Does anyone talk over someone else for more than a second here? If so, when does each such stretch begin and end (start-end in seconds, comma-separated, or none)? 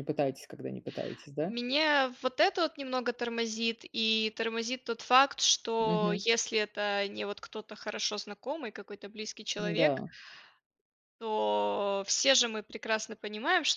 none